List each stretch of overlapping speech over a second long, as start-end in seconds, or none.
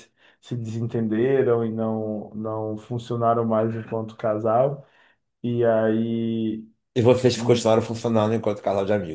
none